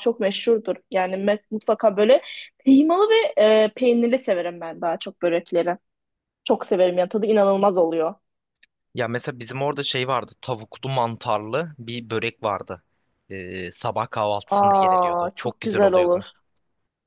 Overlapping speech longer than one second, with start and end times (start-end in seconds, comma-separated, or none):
14.5-16.2